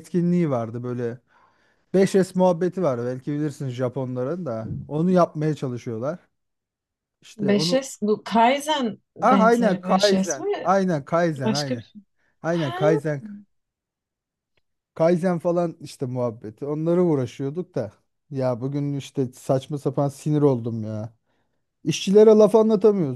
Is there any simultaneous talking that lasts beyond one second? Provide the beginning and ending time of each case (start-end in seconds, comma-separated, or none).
9.2-10.7